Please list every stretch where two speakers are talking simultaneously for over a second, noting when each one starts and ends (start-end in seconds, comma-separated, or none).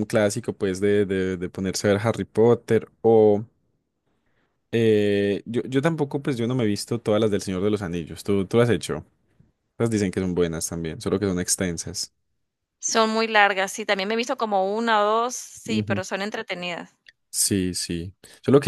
none